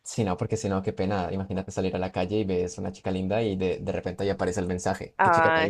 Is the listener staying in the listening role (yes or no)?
no